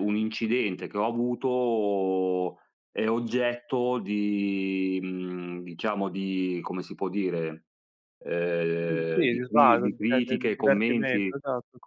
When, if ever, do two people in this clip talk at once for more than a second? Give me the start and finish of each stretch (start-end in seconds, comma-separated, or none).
8.9-11.4